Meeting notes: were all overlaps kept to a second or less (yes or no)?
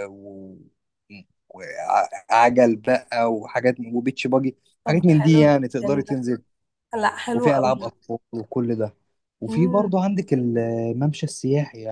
no